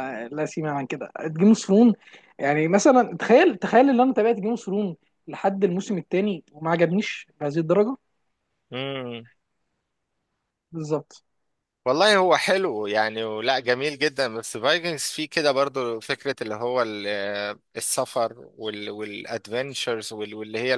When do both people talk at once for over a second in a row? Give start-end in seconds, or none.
none